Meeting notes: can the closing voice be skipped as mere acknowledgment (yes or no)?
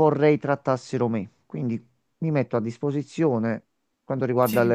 yes